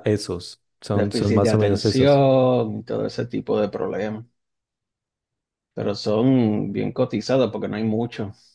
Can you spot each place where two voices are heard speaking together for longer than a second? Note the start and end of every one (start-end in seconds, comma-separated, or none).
0.9-2.2